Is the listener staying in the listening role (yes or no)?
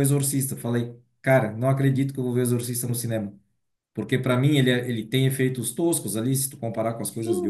yes